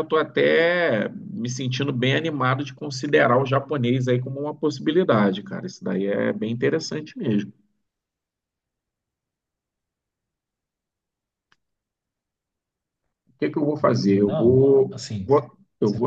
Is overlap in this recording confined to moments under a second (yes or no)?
no